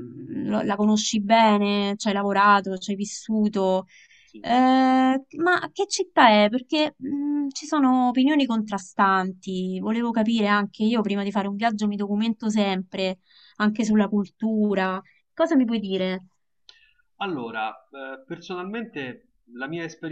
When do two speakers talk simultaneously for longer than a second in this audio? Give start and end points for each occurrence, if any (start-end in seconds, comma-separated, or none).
none